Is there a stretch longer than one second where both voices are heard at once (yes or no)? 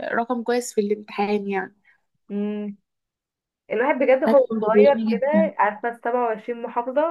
yes